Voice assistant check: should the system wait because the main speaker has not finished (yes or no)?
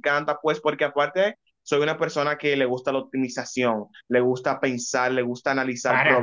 no